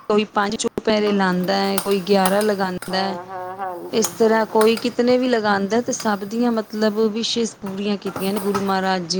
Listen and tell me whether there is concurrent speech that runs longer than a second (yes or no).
no